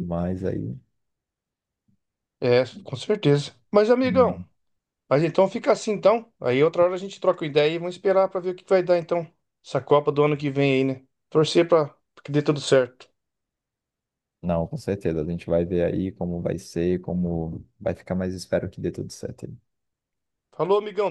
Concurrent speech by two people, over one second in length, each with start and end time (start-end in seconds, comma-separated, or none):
none